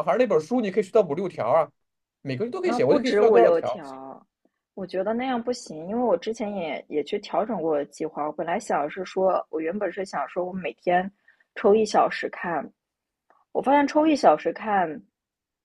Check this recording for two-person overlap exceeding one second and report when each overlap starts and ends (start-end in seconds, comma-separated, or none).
2.6-3.8